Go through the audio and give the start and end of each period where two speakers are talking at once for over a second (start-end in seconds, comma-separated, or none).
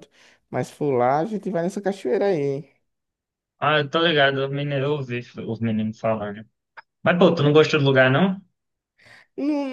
none